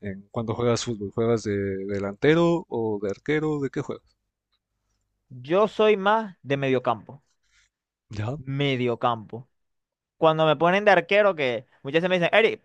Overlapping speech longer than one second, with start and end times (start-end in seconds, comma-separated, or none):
none